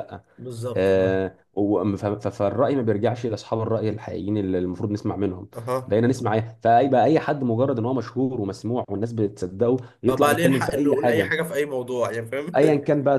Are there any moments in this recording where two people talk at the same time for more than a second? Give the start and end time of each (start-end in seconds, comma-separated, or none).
10.1-11.3